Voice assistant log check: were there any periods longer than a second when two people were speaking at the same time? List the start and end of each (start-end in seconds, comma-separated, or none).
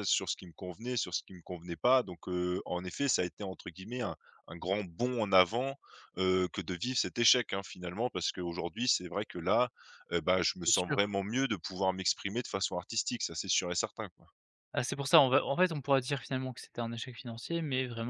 none